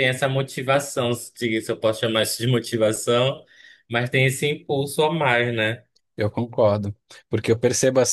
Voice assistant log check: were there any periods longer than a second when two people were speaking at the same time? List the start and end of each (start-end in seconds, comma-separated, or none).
none